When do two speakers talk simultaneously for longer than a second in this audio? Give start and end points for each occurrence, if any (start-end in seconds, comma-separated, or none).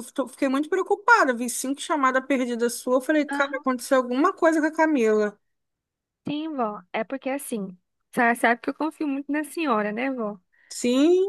none